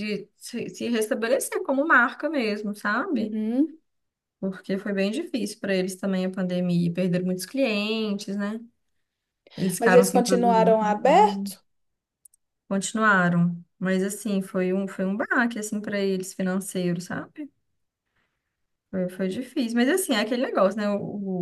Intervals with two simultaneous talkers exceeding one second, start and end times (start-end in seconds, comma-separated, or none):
9.8-11.5